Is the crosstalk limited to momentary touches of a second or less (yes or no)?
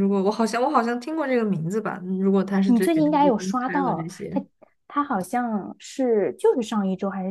no